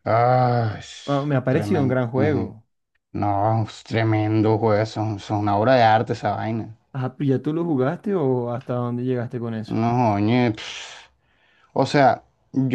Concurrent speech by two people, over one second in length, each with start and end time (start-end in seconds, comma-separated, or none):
none